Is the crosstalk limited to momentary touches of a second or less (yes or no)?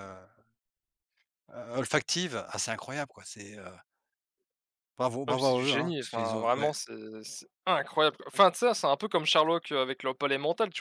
no